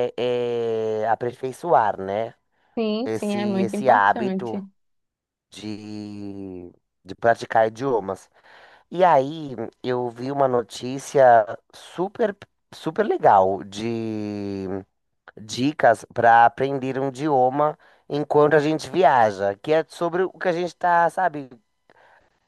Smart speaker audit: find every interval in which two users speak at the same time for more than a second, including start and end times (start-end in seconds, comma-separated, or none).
3.0-4.6